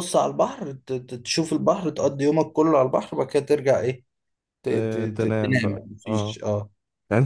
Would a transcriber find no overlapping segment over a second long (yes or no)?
no